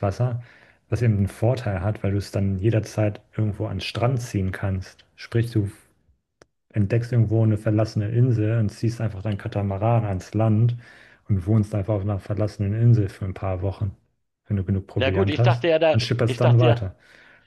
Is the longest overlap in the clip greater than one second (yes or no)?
yes